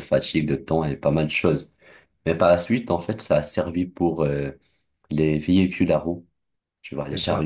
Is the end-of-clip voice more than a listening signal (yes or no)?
no